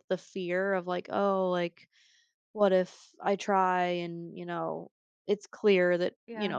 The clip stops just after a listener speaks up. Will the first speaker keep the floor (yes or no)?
yes